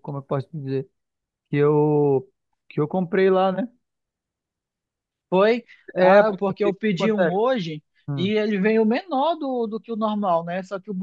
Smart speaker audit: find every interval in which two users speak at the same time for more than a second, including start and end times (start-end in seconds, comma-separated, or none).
6.0-7.4